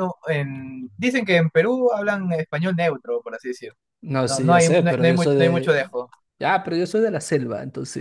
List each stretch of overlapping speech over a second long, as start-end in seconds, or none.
4.3-5.9